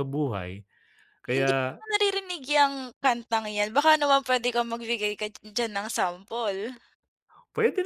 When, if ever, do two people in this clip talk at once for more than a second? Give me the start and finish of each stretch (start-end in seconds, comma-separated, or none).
none